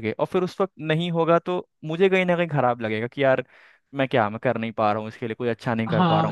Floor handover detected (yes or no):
yes